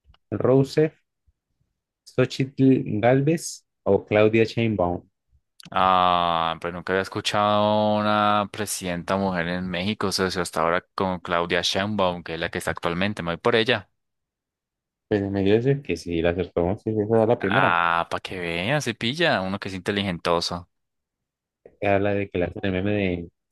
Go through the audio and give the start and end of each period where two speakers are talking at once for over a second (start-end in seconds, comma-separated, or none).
none